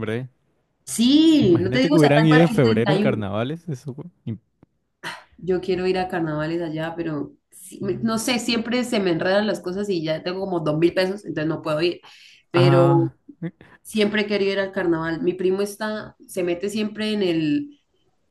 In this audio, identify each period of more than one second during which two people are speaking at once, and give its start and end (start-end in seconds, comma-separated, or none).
1.5-3.2